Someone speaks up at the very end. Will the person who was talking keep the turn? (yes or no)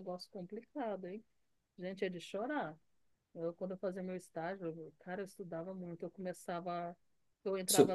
yes